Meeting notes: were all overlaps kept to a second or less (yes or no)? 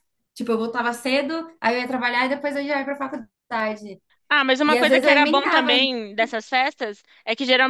no